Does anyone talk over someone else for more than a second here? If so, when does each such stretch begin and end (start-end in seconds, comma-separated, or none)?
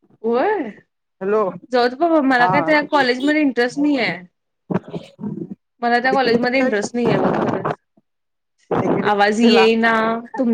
6.1-7.4